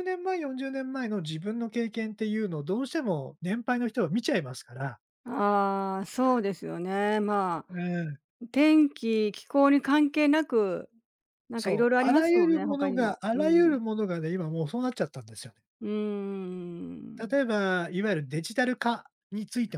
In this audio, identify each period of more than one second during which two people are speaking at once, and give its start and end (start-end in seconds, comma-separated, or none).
11.6-13.8